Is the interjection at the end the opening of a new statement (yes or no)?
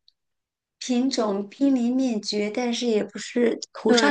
yes